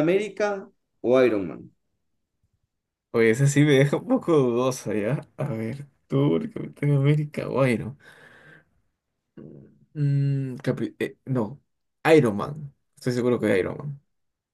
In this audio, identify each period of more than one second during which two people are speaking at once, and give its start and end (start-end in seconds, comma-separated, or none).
none